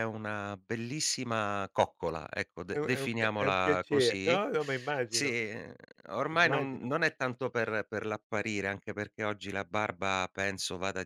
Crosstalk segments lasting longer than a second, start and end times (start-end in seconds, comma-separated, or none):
2.7-4.4